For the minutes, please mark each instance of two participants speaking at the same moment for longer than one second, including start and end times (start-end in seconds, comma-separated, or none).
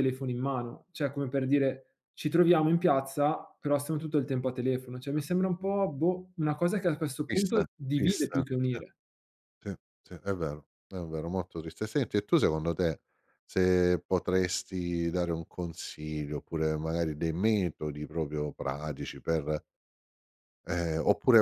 7.3-8.8